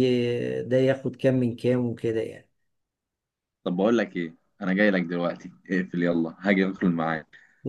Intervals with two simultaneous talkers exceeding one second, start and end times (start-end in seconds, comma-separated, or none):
none